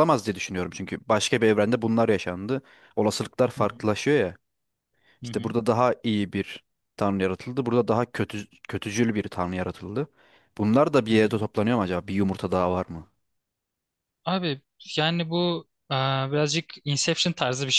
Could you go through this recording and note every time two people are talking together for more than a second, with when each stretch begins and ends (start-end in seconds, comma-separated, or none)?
none